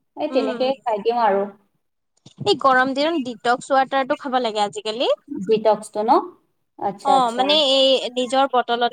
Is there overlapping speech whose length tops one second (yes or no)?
no